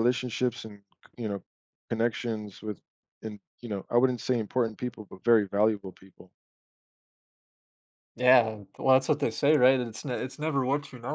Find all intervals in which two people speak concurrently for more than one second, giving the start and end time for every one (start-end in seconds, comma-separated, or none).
none